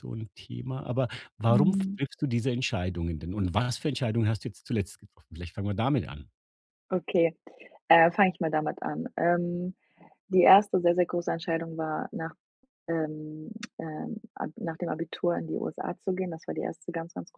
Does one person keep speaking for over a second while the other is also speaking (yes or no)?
no